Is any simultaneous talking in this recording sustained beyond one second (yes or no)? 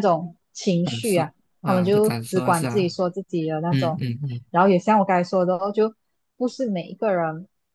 yes